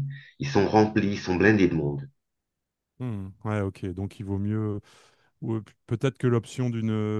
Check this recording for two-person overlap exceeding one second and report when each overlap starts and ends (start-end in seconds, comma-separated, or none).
none